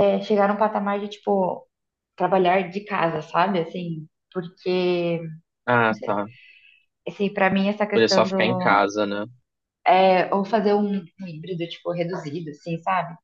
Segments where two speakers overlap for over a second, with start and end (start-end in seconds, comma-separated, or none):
none